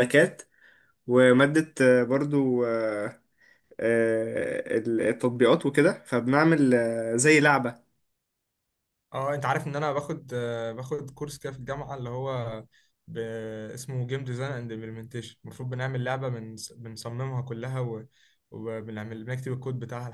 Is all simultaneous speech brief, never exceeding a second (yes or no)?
yes